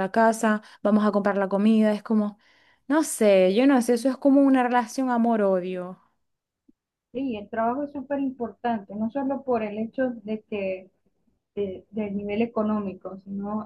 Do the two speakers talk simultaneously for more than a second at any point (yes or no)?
no